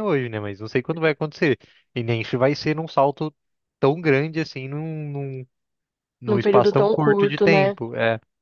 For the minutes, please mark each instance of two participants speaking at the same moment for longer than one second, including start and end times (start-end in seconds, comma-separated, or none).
6.3-7.8